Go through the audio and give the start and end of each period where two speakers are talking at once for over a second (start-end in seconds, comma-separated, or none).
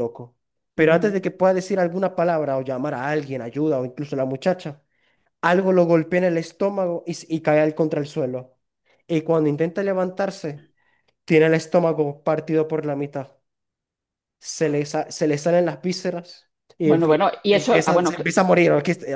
16.8-18.3